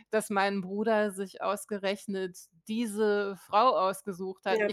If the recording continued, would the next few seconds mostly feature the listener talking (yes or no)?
no